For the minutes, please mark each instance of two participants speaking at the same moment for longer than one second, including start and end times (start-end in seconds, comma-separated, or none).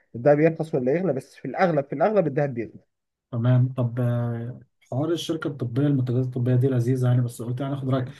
none